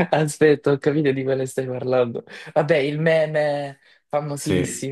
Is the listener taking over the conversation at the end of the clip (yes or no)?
yes